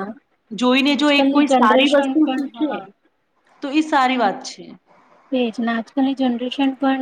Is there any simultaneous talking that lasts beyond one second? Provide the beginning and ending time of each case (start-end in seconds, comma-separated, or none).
0.9-2.8